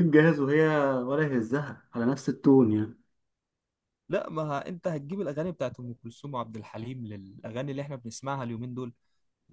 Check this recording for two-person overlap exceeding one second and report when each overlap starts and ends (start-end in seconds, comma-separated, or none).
none